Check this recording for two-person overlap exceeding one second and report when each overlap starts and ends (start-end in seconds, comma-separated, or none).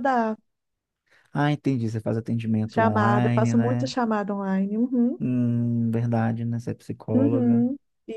2.7-3.9